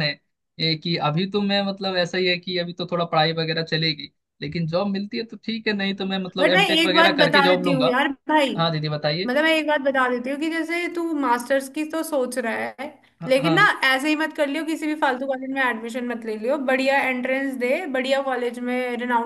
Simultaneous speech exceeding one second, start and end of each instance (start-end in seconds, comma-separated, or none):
6.4-8.0